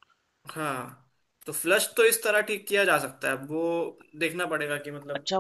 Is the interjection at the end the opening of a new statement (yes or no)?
yes